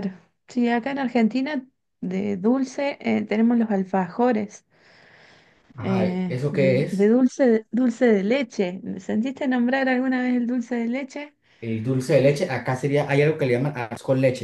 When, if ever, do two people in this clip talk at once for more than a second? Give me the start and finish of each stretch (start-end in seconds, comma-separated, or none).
5.8-7.1